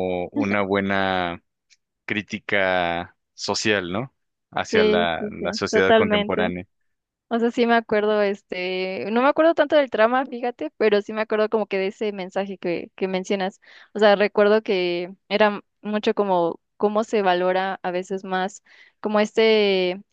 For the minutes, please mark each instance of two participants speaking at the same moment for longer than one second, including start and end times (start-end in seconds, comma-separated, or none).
4.7-6.5